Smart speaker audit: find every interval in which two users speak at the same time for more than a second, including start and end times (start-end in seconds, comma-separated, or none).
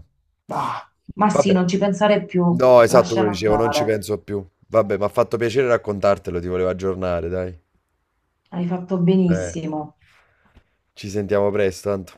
2.5-4.0